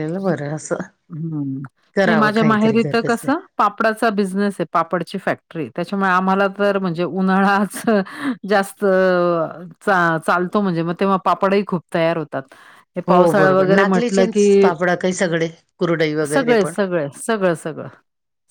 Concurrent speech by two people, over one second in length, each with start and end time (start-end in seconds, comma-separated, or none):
2.0-3.3, 13.1-14.7